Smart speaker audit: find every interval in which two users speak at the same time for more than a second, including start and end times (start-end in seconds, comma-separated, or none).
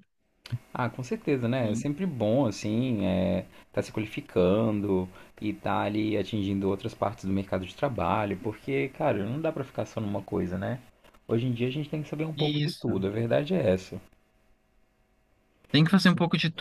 none